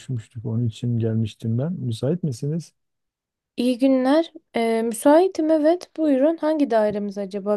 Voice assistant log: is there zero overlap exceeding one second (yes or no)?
yes